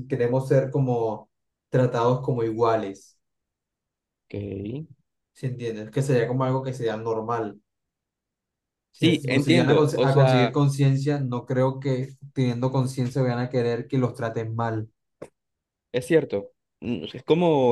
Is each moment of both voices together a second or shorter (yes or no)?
no